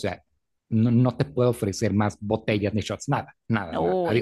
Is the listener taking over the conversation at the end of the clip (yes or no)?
yes